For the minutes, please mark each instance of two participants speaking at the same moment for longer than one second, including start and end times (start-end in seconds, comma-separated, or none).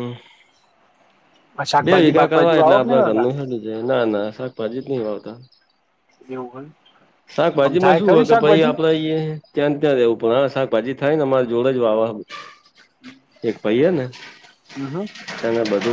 1.8-3.3